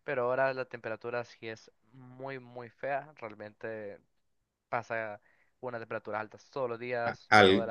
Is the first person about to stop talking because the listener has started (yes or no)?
yes